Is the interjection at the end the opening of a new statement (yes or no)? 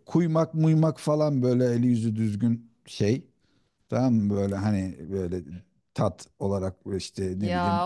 yes